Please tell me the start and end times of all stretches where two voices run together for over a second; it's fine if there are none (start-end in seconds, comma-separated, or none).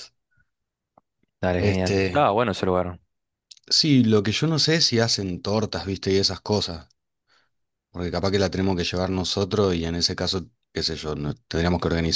none